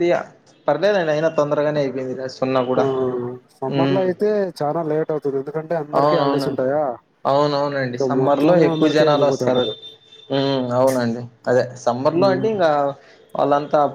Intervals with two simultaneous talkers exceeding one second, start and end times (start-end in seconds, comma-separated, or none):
7.9-9.6